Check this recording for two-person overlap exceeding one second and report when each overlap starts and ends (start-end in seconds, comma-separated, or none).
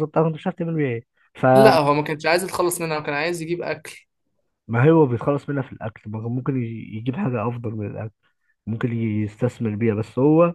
none